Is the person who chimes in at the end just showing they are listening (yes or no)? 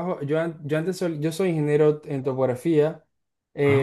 yes